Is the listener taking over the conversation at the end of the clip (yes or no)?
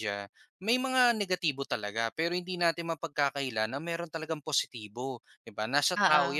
no